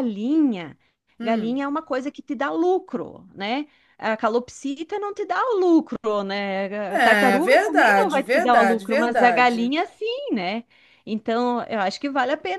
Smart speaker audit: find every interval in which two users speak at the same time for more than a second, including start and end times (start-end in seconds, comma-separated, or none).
6.9-9.7